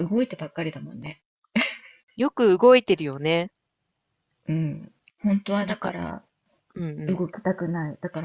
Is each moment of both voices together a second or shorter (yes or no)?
yes